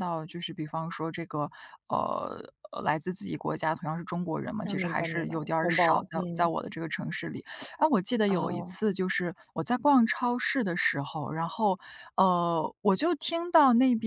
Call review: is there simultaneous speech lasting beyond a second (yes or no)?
yes